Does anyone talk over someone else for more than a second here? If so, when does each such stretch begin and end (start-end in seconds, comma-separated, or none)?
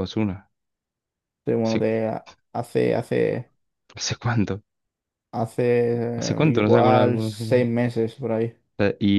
6.5-7.7